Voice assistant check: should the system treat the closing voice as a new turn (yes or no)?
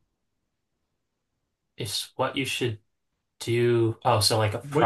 yes